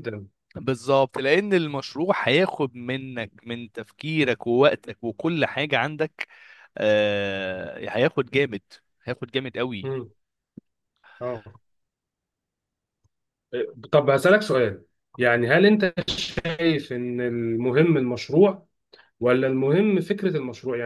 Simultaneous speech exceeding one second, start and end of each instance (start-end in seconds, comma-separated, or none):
none